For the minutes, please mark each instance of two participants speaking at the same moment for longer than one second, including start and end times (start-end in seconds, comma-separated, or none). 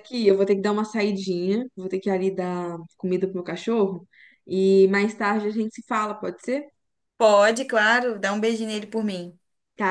none